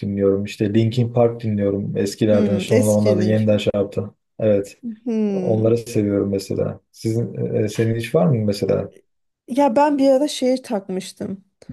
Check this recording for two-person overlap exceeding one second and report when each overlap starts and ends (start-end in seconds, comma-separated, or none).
2.3-3.7